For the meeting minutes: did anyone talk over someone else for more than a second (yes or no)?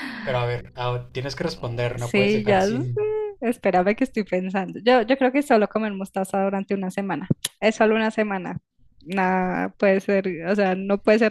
yes